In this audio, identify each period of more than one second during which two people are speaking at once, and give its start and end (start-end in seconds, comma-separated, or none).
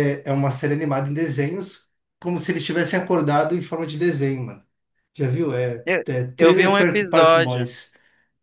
5.8-7.7